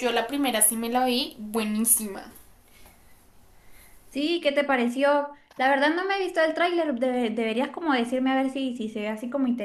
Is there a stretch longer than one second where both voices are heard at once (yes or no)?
no